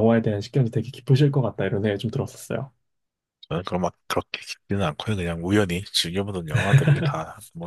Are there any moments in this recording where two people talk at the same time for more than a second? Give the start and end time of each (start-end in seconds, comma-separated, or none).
none